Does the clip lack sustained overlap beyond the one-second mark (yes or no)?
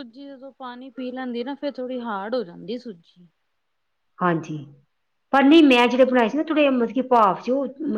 yes